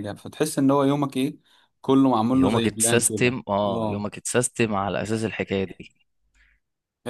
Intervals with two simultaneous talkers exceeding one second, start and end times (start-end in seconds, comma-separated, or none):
2.3-4.1